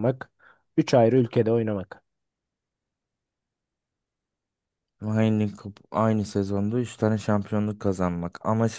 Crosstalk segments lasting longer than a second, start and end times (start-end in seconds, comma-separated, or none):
none